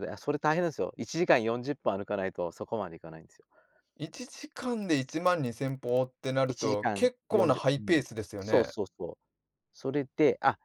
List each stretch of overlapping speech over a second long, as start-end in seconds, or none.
6.5-8.7